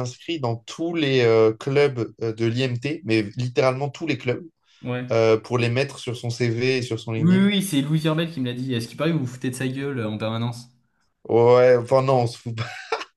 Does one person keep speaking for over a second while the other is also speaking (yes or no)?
no